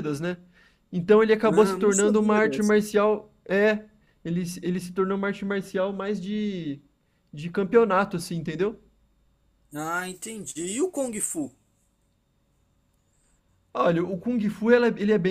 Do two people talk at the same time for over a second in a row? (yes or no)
yes